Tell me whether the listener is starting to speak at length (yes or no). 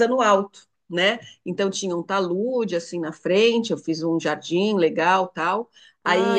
no